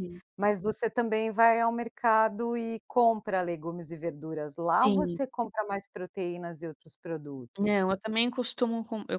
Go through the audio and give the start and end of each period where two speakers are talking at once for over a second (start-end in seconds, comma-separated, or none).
none